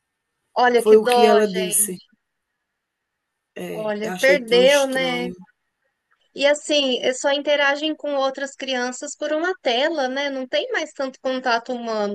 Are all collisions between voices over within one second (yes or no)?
no